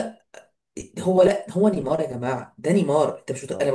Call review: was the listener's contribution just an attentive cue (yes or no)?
yes